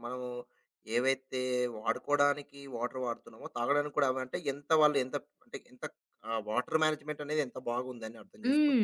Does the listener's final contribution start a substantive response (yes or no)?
yes